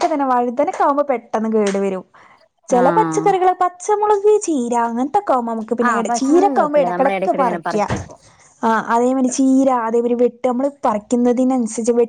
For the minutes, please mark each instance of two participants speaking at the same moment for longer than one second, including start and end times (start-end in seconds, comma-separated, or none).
5.9-7.8